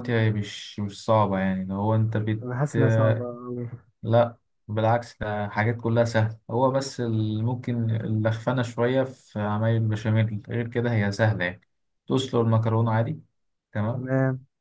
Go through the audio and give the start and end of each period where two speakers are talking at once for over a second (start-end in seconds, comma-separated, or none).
none